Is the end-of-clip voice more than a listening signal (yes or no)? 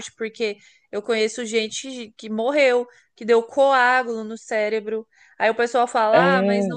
no